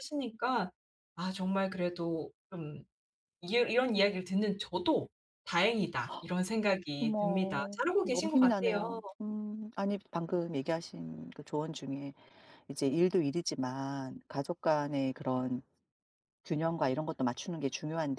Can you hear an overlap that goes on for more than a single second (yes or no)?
yes